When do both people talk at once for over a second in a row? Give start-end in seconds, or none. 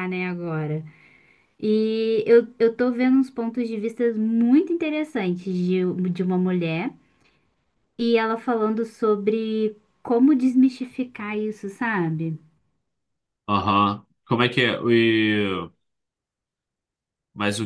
none